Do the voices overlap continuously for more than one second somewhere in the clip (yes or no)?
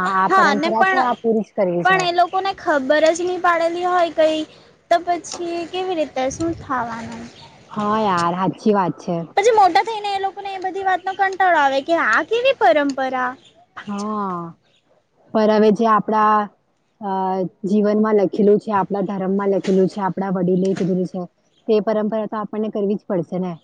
no